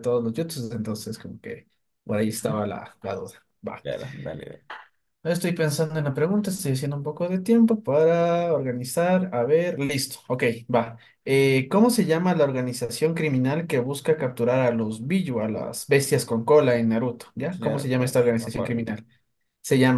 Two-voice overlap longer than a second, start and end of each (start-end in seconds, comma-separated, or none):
17.5-18.8